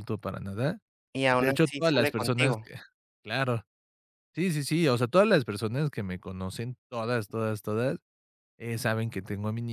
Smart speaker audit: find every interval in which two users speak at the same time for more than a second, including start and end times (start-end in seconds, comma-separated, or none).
1.4-2.7